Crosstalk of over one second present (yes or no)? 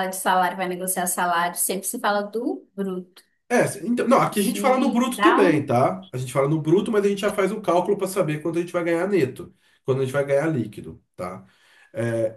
yes